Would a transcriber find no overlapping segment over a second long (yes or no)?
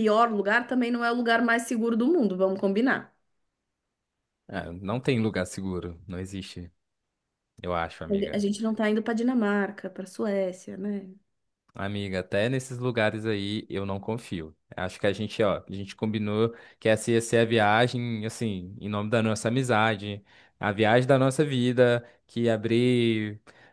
yes